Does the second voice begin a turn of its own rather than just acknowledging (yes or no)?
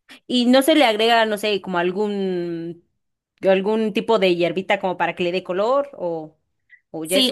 yes